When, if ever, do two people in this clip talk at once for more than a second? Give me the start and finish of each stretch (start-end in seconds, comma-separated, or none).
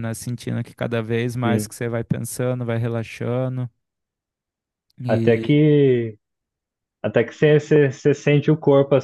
none